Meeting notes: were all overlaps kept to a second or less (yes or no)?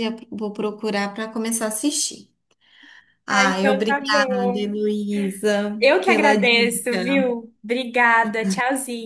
no